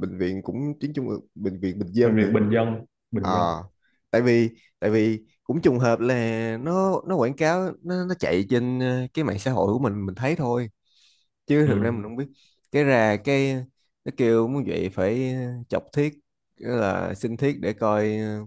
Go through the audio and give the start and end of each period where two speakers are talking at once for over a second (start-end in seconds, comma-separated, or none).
none